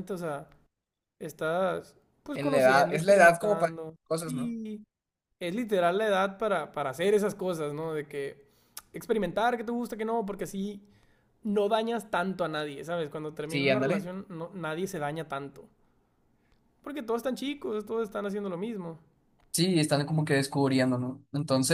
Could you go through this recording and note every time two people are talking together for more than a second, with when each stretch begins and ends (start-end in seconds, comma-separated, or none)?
2.3-4.6